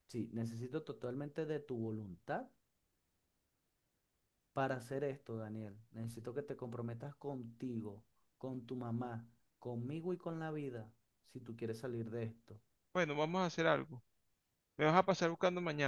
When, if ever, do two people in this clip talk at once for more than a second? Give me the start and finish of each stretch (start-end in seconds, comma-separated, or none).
none